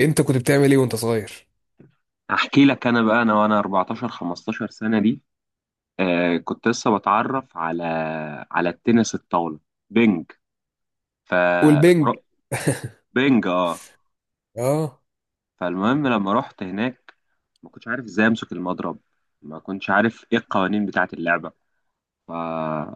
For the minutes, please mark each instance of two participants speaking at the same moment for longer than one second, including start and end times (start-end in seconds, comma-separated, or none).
none